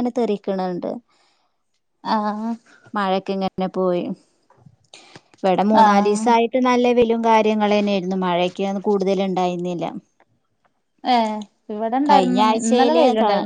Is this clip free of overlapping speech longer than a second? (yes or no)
yes